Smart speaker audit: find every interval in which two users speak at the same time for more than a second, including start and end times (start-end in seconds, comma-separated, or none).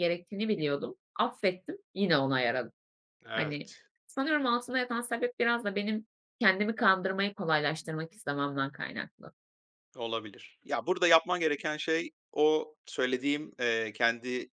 none